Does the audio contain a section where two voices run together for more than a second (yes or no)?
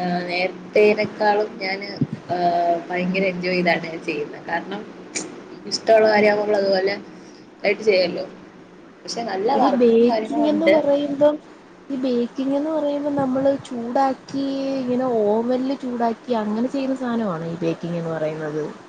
no